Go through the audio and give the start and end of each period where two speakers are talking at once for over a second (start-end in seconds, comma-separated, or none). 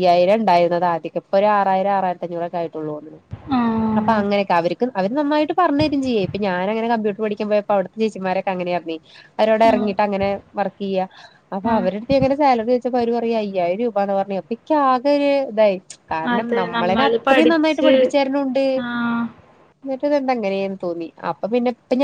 16.4-17.9